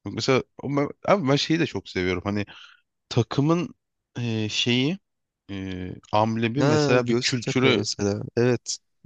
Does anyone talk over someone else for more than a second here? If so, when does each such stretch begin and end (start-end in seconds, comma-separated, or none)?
6.6-7.8